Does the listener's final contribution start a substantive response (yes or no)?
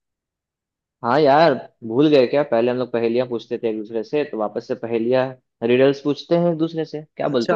yes